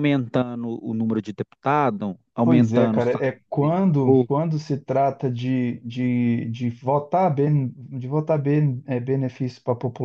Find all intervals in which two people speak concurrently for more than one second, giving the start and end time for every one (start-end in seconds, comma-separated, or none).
2.4-4.3